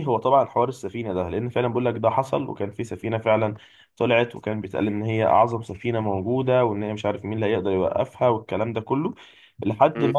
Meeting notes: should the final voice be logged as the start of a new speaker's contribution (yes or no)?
no